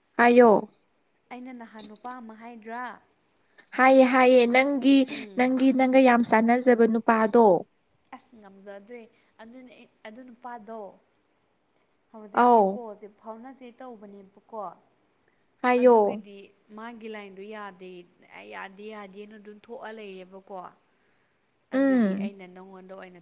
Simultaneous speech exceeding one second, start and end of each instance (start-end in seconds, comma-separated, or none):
none